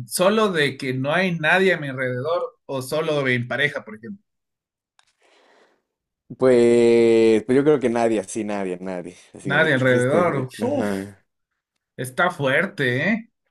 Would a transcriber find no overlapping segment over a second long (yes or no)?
no